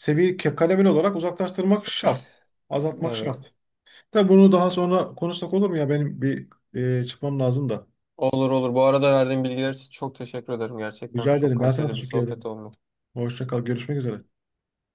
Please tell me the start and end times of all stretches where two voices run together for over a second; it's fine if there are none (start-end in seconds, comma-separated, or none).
11.2-12.5